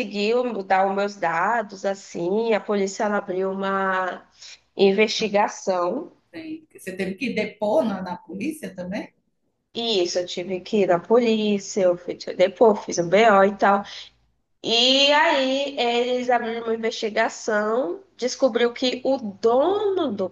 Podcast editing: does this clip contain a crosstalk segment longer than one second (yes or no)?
no